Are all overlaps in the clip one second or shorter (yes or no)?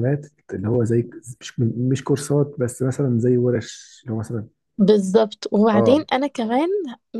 yes